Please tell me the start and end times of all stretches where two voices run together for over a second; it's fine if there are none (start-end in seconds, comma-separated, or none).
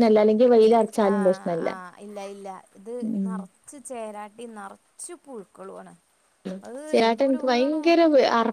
none